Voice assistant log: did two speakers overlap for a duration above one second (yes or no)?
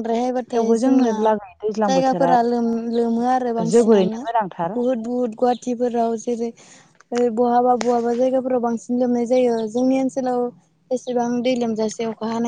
no